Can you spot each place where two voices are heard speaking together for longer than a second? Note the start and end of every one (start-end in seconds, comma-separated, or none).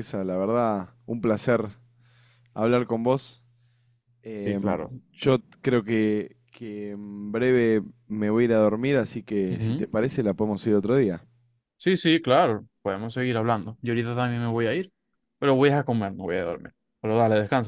none